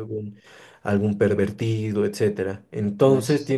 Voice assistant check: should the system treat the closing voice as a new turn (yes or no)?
no